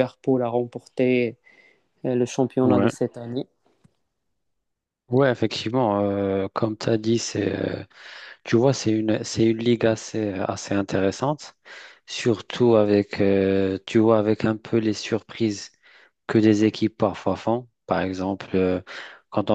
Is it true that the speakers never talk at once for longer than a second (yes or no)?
yes